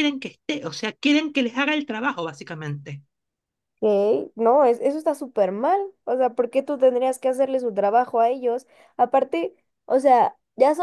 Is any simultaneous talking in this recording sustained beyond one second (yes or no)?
no